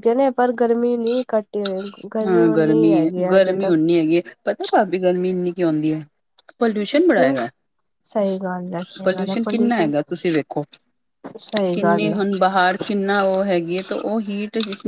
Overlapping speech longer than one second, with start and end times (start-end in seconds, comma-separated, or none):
none